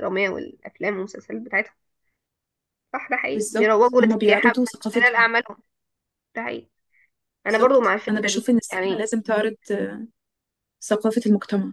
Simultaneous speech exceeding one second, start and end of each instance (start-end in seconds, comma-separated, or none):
3.3-5.3, 7.5-9.1